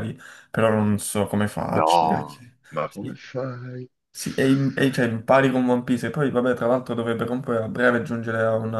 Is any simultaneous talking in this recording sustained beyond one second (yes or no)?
yes